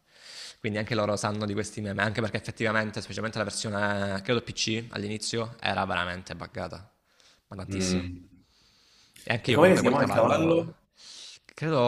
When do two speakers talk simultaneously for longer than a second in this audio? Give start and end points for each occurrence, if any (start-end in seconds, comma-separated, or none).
9.5-10.8